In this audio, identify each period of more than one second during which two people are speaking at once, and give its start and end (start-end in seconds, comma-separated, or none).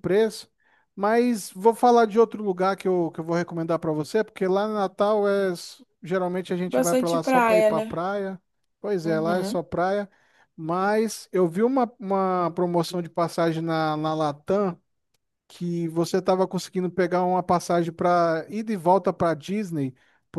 6.7-8.0